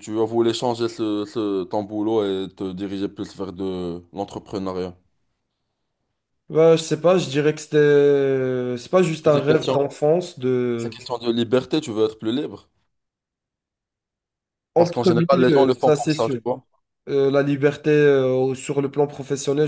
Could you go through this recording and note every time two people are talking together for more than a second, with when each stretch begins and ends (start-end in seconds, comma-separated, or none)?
14.8-16.4